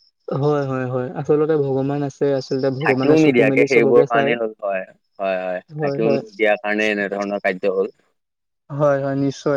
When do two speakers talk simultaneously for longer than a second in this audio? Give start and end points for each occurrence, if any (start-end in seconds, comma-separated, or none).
2.8-4.3